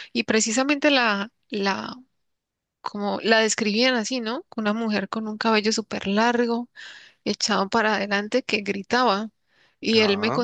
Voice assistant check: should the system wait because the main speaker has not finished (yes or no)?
yes